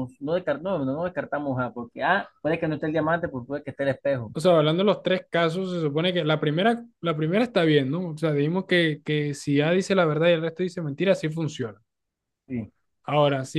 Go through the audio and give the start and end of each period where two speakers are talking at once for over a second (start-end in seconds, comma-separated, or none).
none